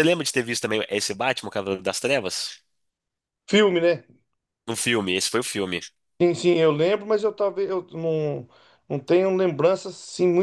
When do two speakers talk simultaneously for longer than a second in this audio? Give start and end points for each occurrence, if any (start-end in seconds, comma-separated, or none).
none